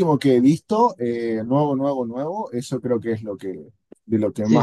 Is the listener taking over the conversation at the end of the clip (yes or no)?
yes